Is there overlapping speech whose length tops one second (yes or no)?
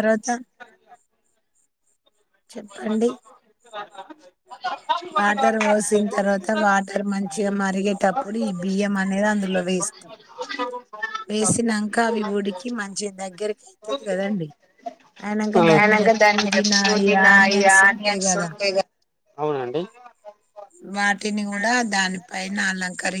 yes